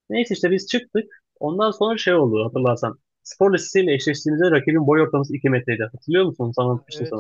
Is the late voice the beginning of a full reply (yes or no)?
yes